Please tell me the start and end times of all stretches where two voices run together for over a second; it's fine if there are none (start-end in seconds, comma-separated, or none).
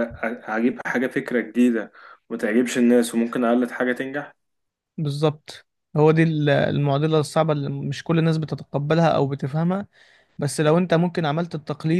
none